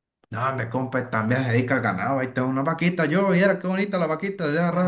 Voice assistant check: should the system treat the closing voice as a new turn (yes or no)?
yes